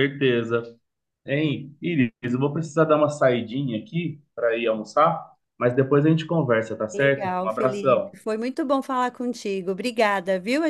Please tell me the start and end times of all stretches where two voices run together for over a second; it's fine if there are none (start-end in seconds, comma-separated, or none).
6.9-8.1